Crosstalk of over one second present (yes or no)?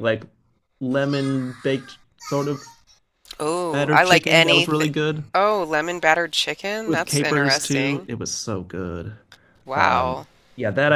yes